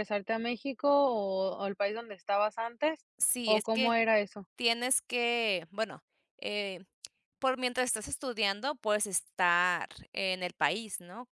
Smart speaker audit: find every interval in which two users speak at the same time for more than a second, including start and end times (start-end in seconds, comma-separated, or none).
none